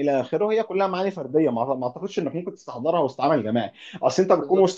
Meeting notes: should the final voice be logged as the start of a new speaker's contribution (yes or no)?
no